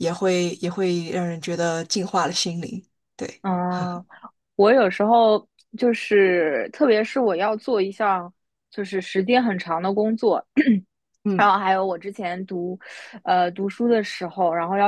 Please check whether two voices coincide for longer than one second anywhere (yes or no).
no